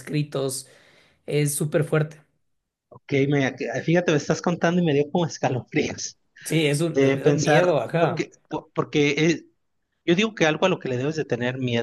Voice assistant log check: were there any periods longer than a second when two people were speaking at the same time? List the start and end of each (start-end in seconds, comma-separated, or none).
6.9-8.3